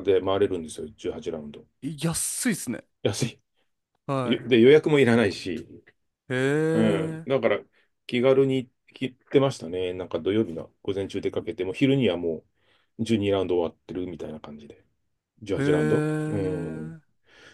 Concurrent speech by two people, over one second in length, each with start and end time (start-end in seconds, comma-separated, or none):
15.6-17.0